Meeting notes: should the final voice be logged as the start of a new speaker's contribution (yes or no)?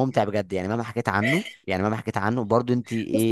yes